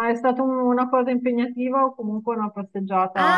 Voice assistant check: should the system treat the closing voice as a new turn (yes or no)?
yes